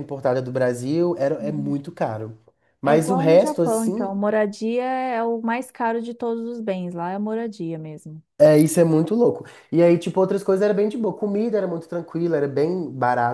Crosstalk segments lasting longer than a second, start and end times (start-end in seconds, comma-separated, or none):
2.8-4.2